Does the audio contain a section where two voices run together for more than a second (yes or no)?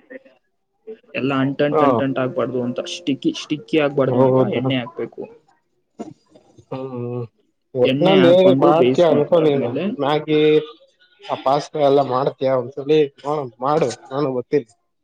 yes